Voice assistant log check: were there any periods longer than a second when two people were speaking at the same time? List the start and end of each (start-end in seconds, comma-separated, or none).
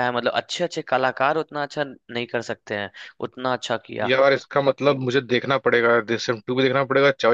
none